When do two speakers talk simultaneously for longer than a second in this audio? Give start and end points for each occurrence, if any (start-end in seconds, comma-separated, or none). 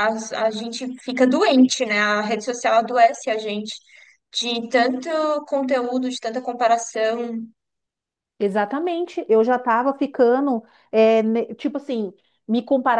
none